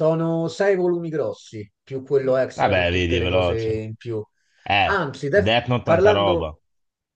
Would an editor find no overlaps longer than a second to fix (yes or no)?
no